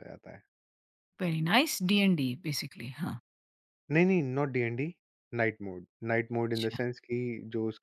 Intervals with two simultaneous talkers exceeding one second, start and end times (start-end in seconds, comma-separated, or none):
none